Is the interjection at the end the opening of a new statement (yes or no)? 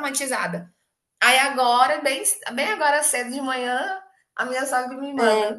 no